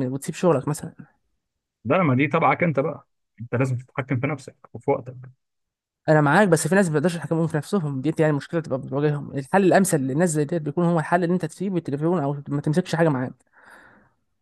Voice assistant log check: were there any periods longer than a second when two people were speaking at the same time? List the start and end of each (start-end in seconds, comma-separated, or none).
none